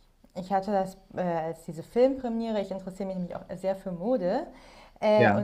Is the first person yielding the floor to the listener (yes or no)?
no